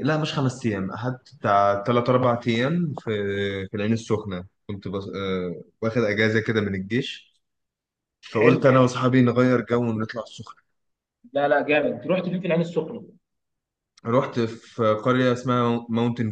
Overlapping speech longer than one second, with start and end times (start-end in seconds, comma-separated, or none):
none